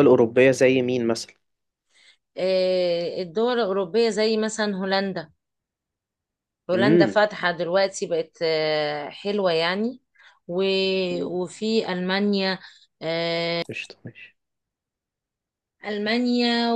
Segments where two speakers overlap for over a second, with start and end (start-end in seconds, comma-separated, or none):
none